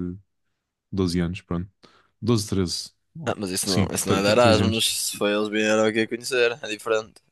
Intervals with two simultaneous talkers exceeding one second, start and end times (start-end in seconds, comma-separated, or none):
3.2-4.9